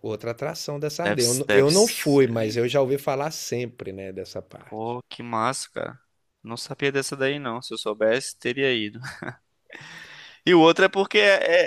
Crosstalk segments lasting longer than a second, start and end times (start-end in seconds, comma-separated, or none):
1.0-2.7